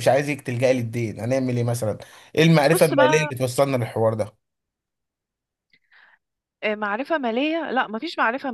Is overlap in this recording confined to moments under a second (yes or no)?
yes